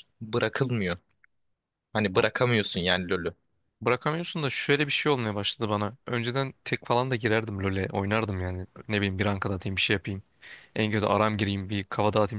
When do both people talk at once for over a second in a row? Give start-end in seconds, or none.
none